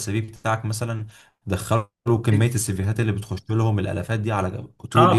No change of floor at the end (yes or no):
no